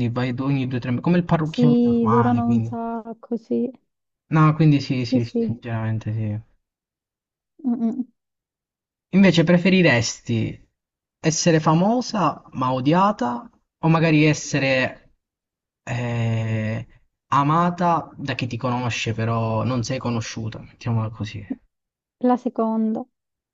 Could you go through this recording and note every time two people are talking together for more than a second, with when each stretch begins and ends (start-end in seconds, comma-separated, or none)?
1.4-2.7